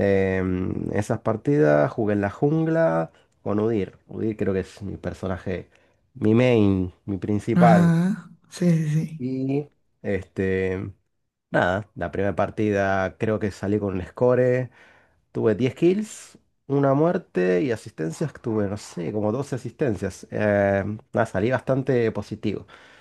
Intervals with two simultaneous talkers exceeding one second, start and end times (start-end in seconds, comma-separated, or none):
none